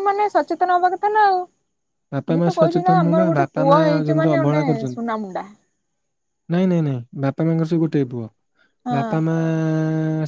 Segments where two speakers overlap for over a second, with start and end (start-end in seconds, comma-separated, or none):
2.1-4.9